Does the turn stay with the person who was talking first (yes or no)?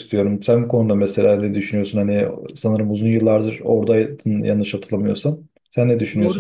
no